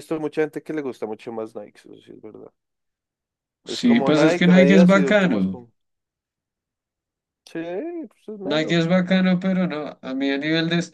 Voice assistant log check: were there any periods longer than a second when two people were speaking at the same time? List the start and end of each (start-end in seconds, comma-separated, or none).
3.7-5.6